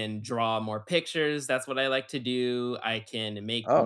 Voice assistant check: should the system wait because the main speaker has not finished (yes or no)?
yes